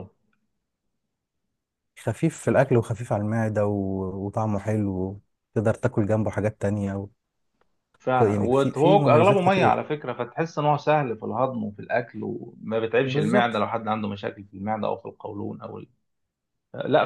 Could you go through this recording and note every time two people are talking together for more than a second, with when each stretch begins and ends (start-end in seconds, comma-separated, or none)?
8.2-9.8